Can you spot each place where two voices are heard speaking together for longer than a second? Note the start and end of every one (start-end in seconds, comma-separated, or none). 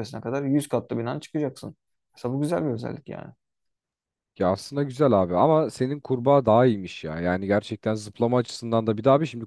none